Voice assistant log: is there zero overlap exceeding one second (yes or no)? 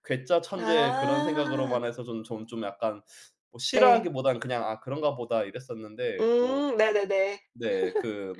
no